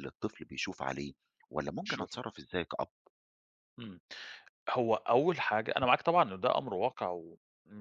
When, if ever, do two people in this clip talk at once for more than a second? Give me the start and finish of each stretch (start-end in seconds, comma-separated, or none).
none